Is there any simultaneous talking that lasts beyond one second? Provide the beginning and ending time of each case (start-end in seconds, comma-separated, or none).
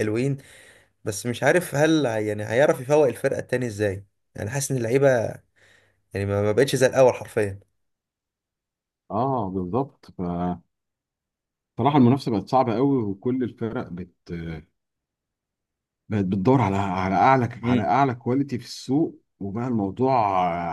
none